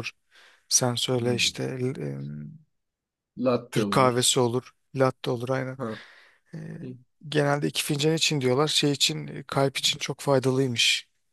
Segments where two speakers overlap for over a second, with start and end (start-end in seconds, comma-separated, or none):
none